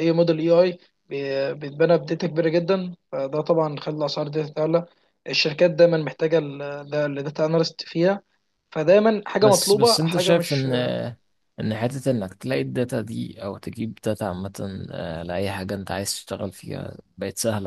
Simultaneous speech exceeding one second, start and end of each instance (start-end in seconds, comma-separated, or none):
9.4-10.7